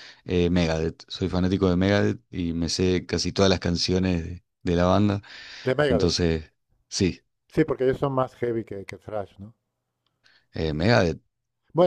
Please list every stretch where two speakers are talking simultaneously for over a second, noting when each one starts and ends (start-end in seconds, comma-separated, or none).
none